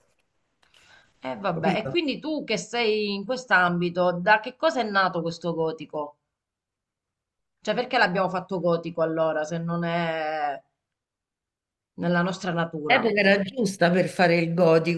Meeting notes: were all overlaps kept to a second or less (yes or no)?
yes